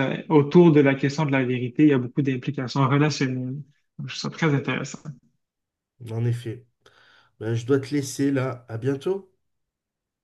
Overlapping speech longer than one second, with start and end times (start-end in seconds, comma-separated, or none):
none